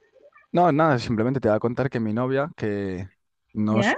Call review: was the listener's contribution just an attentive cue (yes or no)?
yes